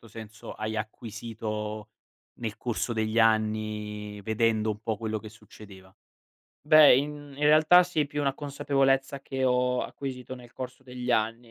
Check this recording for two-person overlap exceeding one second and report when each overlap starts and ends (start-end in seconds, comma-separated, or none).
none